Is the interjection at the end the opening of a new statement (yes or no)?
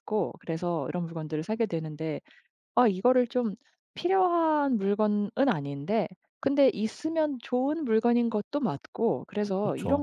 no